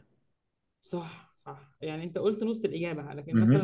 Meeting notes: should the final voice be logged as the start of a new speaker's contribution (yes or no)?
no